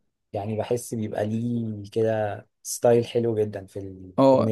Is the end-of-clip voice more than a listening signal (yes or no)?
yes